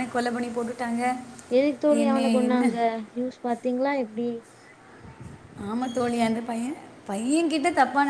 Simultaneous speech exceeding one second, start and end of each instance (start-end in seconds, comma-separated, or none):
none